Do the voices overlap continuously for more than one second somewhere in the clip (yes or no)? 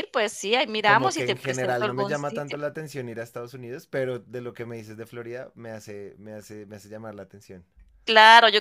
yes